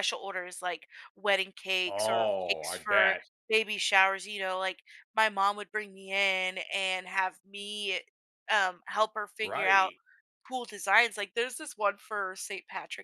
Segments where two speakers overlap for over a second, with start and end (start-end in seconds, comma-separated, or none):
1.9-3.2